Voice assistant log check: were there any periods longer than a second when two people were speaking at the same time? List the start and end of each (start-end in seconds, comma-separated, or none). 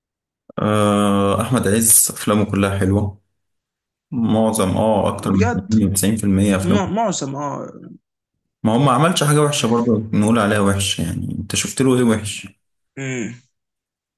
none